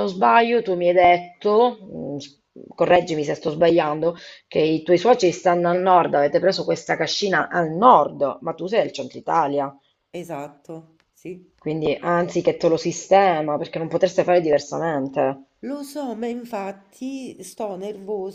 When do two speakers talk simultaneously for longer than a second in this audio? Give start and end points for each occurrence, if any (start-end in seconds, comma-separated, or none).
none